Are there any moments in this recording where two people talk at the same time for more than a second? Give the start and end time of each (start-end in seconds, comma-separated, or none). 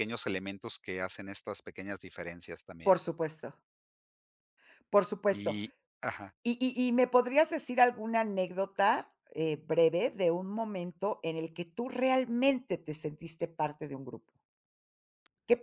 none